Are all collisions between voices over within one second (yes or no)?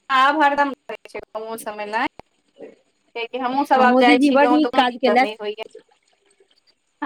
no